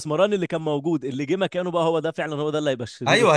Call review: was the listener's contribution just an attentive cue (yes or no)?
no